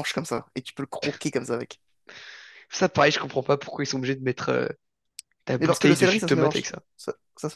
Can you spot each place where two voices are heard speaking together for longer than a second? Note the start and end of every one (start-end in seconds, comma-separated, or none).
5.6-6.8